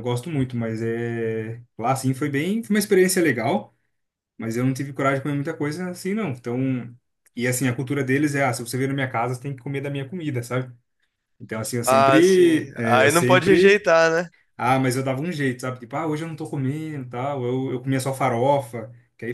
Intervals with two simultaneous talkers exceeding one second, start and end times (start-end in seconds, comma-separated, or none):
11.8-13.8